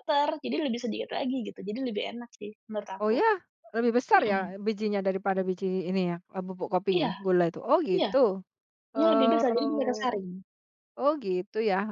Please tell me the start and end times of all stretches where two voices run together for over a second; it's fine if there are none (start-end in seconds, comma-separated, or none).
8.9-10.2